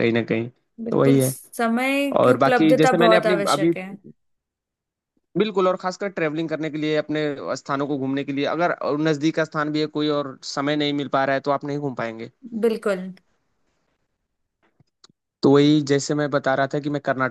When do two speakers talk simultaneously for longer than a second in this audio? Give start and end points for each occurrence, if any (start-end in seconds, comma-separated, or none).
2.2-3.7